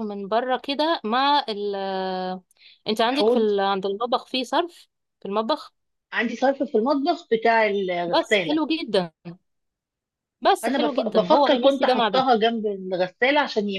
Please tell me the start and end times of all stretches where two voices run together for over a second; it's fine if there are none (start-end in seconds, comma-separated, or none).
10.6-12.3